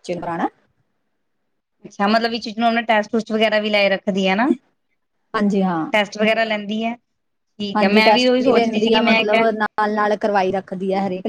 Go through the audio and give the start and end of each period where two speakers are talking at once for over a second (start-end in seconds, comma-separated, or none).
7.8-9.5